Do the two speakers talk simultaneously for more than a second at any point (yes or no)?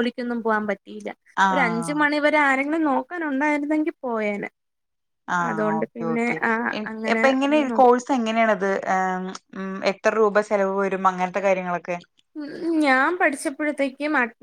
no